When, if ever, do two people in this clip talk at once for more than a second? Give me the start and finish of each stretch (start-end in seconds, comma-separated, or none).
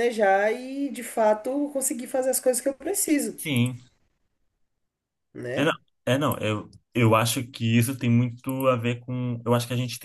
none